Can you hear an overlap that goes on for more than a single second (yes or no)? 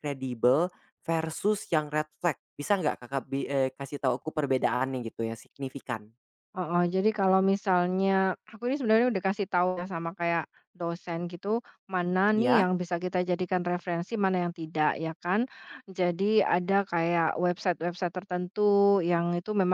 no